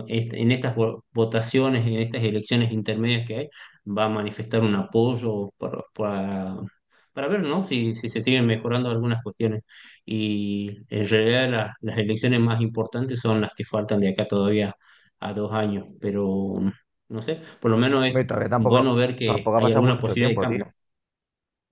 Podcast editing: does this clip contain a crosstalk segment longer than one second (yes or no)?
yes